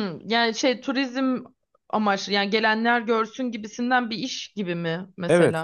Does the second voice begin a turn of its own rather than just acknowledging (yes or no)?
yes